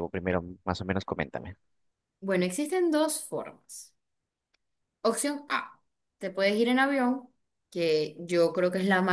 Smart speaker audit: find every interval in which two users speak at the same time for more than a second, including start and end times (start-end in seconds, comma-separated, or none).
none